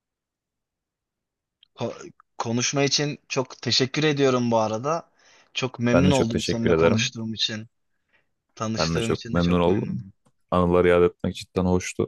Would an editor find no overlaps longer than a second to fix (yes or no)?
no